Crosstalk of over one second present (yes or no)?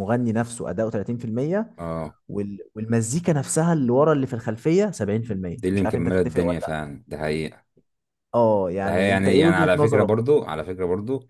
yes